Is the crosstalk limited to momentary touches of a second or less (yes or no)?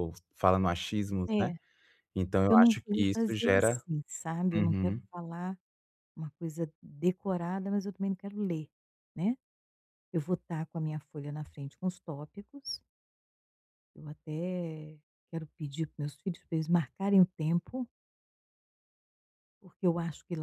no